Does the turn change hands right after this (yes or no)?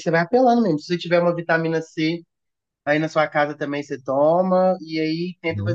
no